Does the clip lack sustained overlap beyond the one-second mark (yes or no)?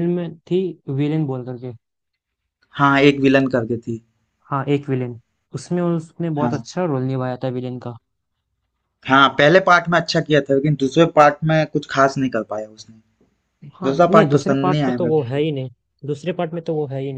no